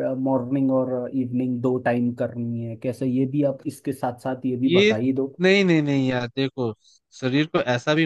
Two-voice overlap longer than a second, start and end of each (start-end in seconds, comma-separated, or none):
none